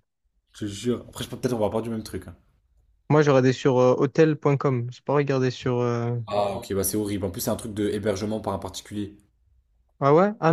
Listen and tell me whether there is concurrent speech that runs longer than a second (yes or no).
no